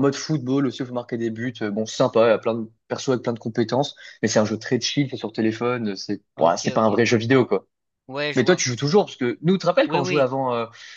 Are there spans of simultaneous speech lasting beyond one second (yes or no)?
no